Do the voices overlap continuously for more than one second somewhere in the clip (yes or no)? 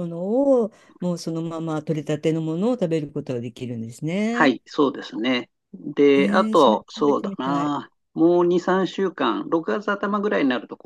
yes